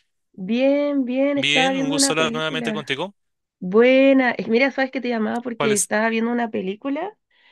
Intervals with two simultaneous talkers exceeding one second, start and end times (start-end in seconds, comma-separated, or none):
1.4-2.9